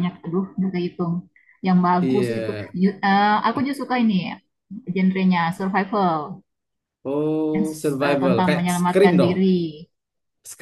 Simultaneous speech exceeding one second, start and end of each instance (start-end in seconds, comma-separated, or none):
7.5-9.3